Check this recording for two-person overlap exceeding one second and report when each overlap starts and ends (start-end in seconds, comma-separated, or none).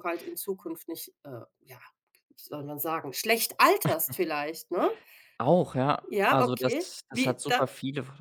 6.1-7.7